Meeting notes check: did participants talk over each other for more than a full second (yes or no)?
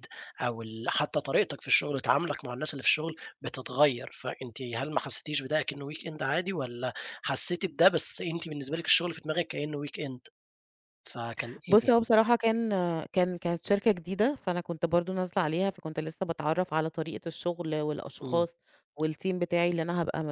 no